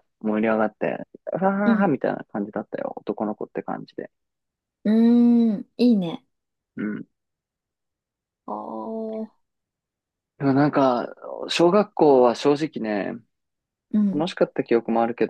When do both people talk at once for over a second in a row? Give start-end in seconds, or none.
none